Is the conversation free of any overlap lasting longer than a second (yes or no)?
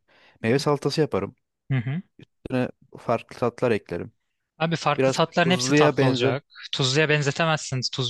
no